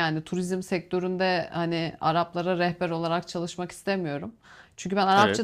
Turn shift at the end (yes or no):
no